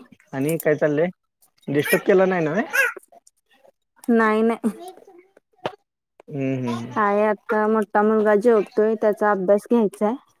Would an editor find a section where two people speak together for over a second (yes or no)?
no